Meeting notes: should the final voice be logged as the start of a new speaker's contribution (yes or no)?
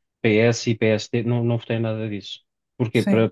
no